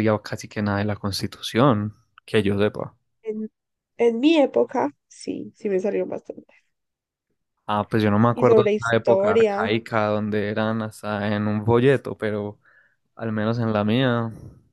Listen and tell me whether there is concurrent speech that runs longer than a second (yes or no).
yes